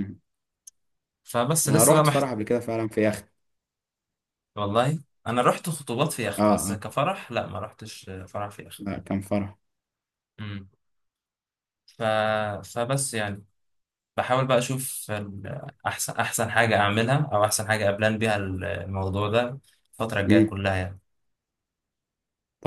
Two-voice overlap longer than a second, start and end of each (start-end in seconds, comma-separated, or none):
none